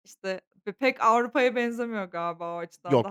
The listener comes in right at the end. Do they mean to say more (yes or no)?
yes